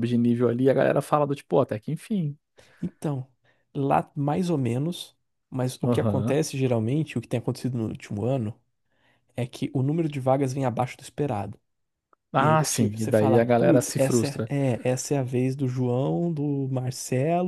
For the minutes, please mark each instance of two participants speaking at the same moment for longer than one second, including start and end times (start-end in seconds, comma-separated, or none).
12.4-14.5